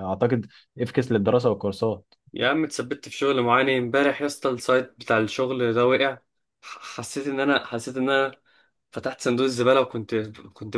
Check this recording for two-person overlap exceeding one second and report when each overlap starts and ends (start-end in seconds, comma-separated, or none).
none